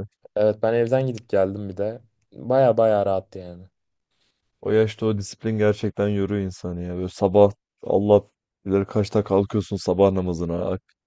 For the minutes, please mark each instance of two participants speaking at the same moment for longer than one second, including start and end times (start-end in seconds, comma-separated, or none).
none